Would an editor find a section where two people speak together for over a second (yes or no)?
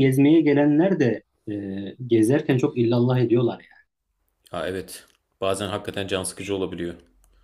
no